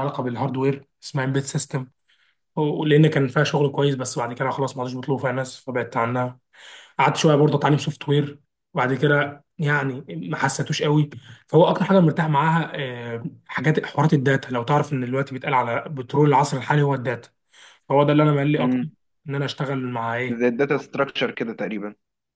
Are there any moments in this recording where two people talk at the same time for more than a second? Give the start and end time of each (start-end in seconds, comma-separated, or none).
none